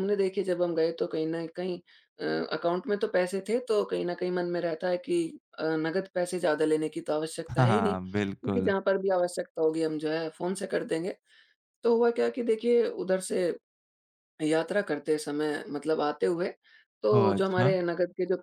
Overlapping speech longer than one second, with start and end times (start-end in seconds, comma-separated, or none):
7.5-8.7